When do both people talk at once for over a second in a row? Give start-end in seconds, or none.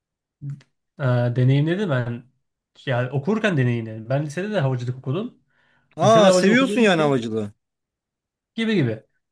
6.0-7.2